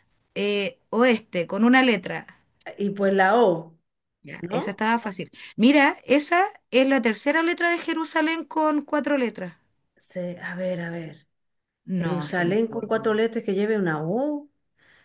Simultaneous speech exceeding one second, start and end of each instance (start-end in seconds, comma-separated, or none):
11.9-13.2